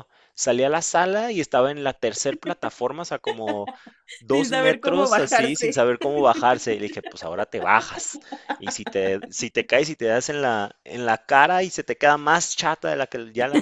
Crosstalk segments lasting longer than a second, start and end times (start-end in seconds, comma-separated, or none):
4.3-5.9